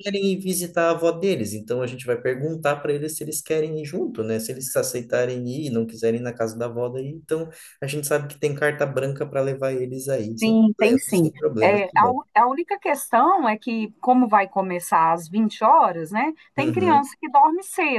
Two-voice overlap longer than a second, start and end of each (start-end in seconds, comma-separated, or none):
10.4-12.2